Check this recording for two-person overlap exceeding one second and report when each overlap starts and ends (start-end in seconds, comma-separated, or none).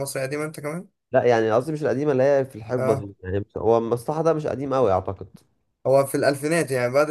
none